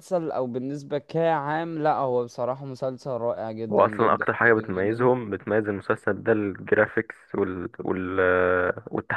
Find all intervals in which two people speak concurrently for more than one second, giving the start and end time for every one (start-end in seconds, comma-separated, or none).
3.7-5.1